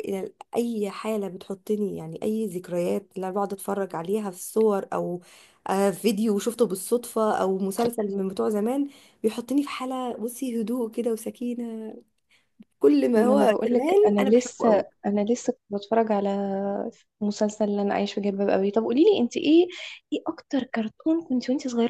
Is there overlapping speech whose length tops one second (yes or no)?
yes